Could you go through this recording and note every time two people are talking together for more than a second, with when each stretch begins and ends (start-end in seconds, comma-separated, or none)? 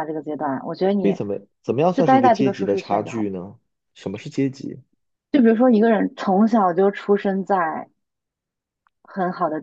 1.9-3.3